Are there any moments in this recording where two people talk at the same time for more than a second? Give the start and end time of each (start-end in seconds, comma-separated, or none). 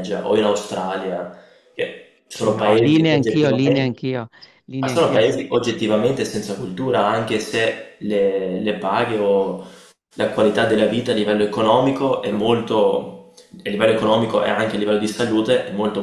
2.3-3.9